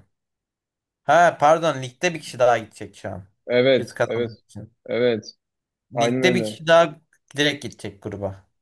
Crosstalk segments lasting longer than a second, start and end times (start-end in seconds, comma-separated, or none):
none